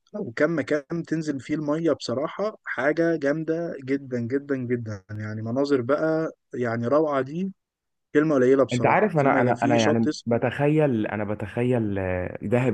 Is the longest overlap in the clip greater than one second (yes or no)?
yes